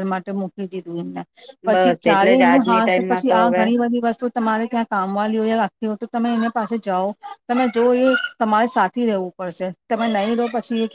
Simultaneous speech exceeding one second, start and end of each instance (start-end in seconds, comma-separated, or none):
1.7-3.6